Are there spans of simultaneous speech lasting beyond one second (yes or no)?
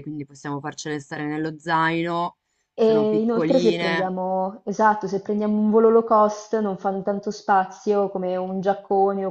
yes